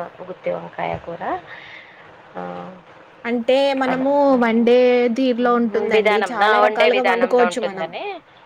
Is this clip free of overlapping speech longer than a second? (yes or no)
no